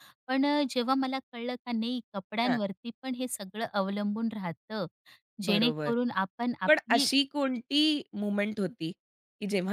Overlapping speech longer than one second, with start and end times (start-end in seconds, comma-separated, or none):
none